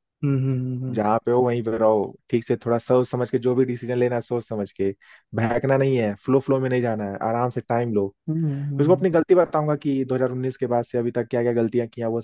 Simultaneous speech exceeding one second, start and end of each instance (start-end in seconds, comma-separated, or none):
none